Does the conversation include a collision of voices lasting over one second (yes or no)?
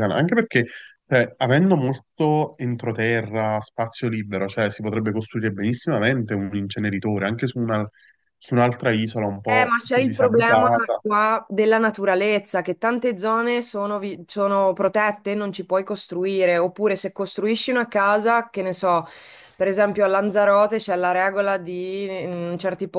yes